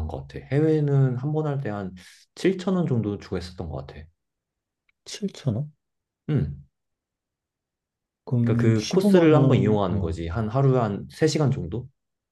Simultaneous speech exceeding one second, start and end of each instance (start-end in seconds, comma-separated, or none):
8.4-10.2